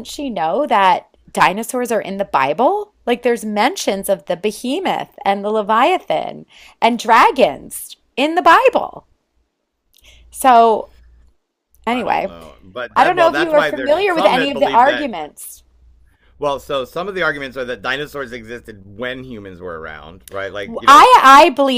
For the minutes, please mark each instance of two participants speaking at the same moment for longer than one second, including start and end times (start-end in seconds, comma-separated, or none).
12.9-15.1